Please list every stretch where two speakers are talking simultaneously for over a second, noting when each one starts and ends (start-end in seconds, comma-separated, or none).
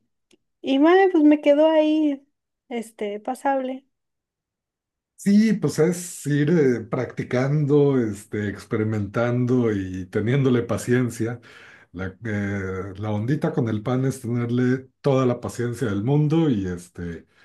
none